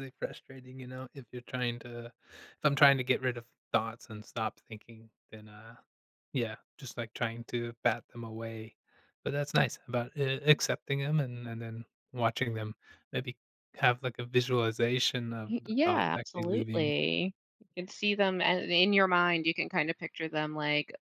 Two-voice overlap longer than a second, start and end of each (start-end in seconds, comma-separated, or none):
15.5-16.9